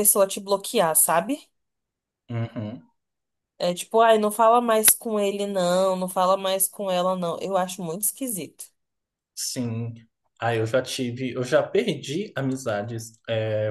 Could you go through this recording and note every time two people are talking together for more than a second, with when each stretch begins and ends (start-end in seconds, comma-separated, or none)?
none